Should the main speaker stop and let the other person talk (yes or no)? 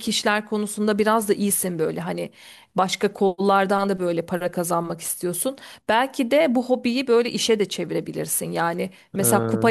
no